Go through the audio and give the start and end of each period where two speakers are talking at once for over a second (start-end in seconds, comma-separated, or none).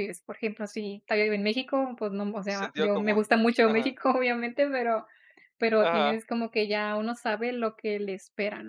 2.5-4.0